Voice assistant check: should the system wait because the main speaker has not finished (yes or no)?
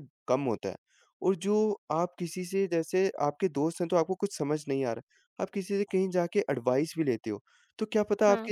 yes